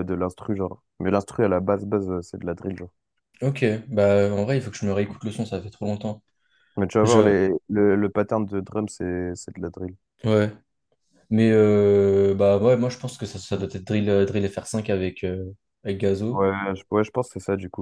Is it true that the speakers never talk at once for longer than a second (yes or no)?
yes